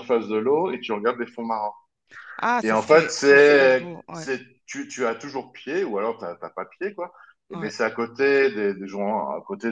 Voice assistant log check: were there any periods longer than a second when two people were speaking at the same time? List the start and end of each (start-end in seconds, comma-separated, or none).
2.6-4.3